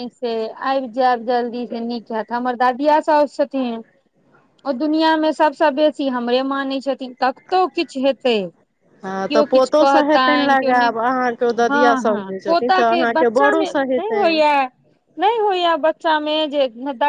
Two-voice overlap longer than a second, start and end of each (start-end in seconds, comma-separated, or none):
9.3-10.9, 11.7-14.4